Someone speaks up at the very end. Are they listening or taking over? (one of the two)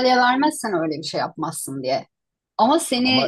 listening